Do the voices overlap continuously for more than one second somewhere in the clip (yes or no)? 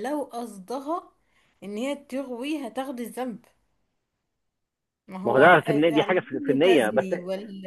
yes